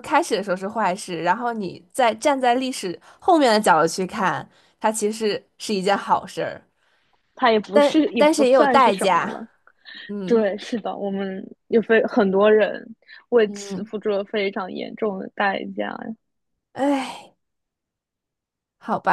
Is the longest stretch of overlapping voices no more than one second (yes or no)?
no